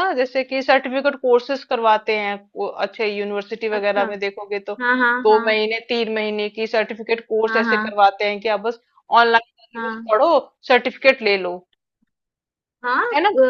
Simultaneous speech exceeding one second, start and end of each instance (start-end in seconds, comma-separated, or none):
none